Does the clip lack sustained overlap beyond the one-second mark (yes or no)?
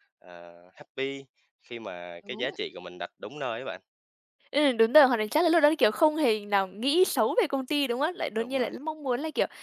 yes